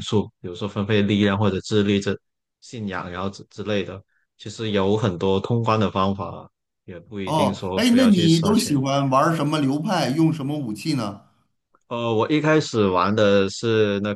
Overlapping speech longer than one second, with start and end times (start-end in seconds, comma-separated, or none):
7.2-8.8